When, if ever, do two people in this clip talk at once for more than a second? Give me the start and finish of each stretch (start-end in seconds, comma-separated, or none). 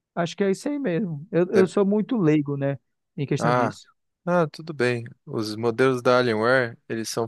none